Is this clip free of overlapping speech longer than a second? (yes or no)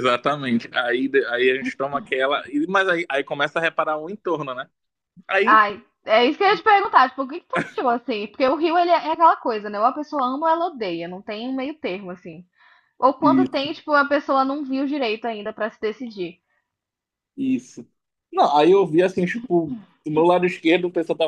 yes